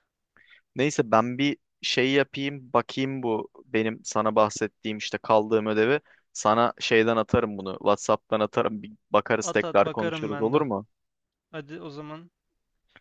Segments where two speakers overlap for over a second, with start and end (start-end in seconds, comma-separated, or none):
9.4-10.6